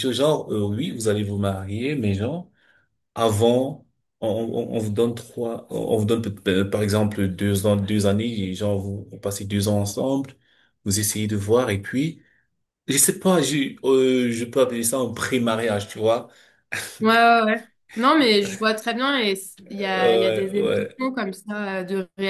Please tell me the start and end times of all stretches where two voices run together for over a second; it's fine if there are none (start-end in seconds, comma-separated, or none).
19.7-21.0